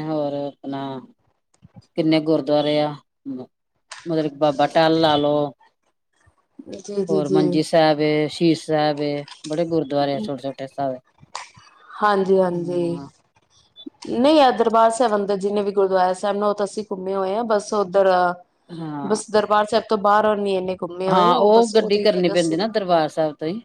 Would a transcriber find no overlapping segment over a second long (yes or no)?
yes